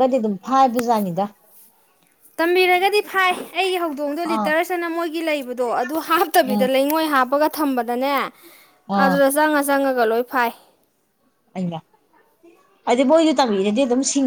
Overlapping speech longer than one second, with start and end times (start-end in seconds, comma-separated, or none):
none